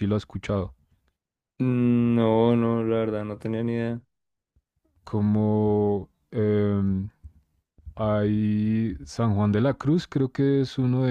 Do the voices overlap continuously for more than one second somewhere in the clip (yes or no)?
no